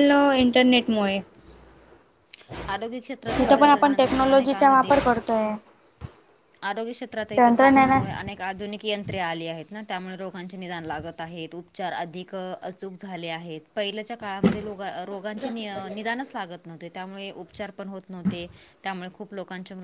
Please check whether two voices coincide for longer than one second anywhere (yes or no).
yes